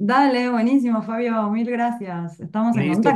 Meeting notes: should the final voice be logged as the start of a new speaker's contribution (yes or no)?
yes